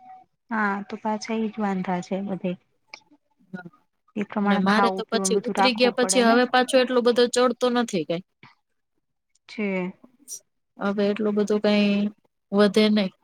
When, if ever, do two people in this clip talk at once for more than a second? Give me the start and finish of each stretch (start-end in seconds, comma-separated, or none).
4.4-6.4